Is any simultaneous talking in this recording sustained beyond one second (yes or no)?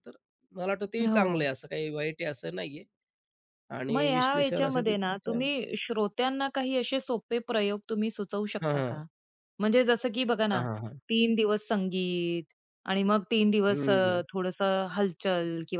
yes